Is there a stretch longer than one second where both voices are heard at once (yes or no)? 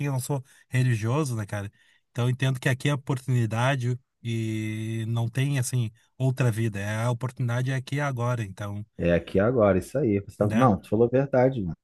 no